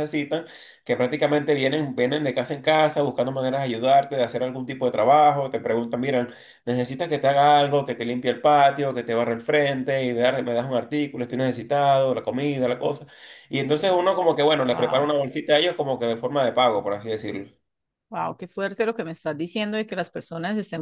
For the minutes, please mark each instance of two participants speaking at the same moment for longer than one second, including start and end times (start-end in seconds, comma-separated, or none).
none